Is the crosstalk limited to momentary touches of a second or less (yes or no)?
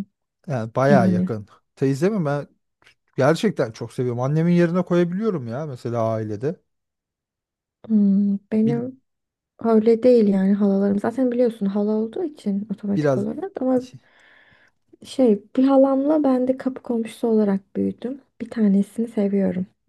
yes